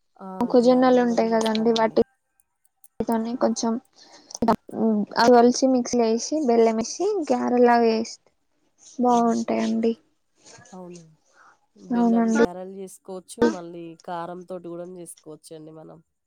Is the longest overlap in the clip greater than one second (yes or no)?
yes